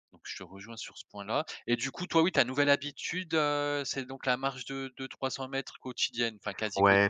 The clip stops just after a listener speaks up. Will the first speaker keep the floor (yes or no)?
no